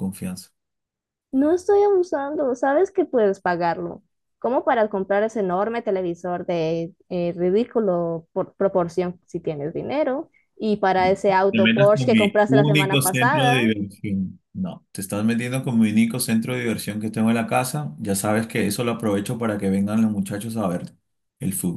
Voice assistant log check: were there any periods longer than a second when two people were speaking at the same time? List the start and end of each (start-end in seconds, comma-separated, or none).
11.5-13.6